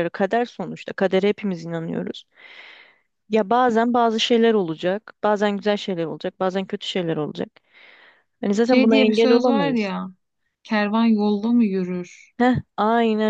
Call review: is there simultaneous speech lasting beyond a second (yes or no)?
yes